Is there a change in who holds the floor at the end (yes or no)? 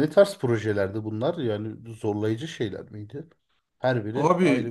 yes